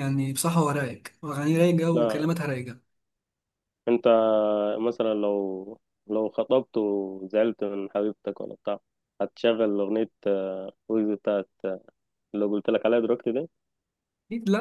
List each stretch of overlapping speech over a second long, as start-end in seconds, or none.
none